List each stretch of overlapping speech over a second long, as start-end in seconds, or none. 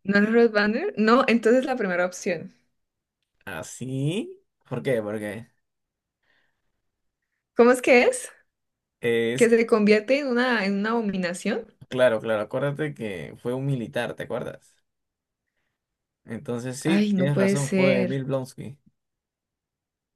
16.9-18.2